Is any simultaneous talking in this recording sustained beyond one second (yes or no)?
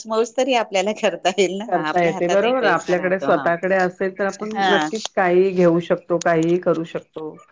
yes